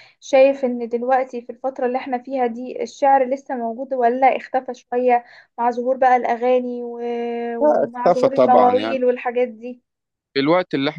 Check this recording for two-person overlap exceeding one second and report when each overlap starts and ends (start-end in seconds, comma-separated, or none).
7.6-9.0